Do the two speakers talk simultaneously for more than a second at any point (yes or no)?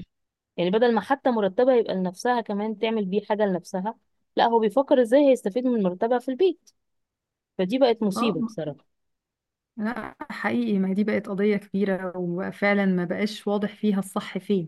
no